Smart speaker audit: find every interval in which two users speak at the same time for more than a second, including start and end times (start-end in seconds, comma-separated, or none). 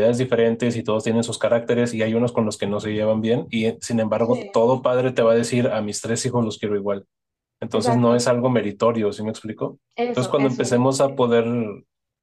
9.9-11.2